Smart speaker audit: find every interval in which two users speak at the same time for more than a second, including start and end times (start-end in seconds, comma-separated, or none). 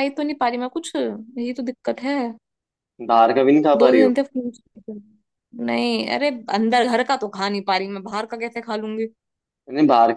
none